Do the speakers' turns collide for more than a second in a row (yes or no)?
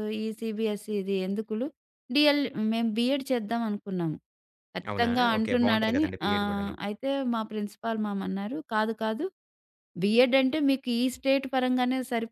yes